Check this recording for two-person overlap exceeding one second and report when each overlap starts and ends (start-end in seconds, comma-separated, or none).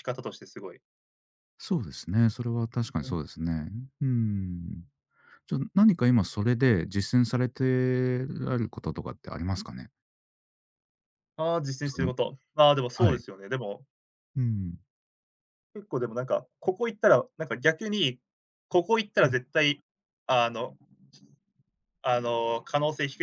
none